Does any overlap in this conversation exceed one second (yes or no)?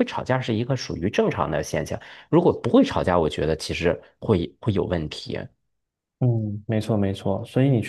no